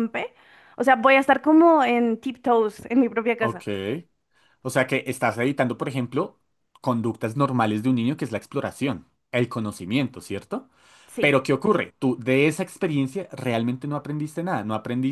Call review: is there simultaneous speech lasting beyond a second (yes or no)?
no